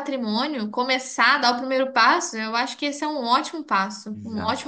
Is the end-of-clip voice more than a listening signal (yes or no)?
yes